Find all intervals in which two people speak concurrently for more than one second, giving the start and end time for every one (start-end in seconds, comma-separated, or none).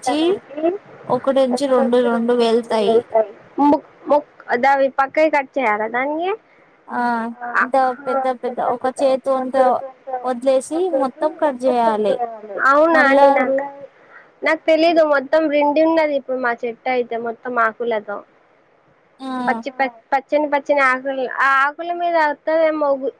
none